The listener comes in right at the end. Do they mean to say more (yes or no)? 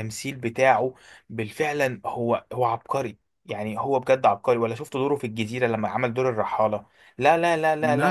yes